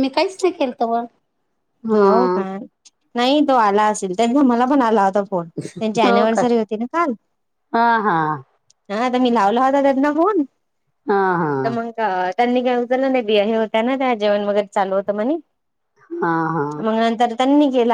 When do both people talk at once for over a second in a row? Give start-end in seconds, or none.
none